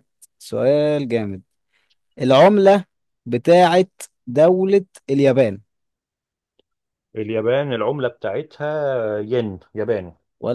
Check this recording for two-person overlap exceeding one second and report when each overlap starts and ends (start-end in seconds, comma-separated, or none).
none